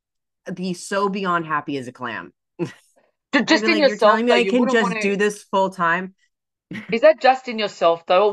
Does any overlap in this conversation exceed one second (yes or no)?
yes